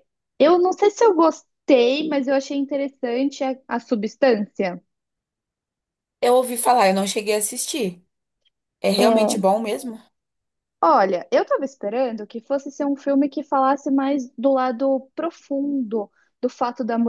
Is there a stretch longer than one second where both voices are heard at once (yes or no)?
no